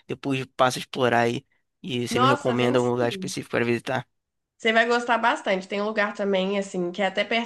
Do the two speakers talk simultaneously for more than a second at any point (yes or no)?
yes